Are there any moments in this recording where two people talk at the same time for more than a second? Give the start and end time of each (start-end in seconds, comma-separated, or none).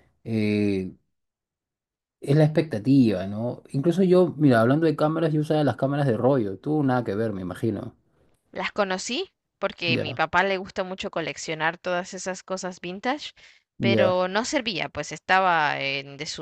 none